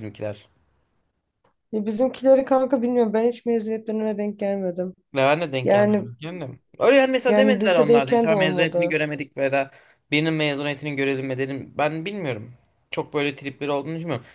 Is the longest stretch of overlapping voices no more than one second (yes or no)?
no